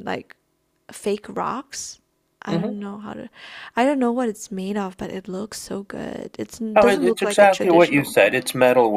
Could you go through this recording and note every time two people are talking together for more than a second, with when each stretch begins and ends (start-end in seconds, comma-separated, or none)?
6.8-8.2